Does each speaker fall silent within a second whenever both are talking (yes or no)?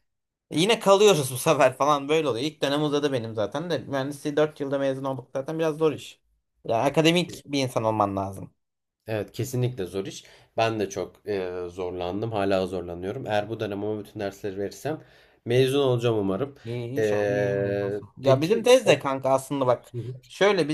no